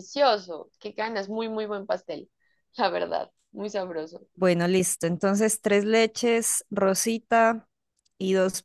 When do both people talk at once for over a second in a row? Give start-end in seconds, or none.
none